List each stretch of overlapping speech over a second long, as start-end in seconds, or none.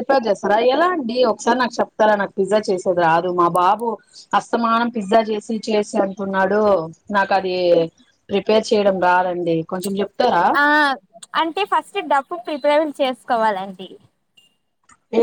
none